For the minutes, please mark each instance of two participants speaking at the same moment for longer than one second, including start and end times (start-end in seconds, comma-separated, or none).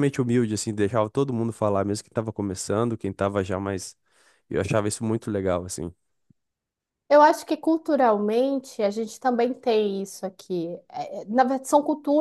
none